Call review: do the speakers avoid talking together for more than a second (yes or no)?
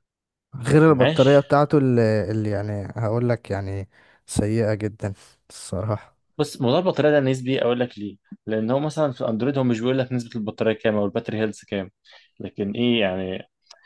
yes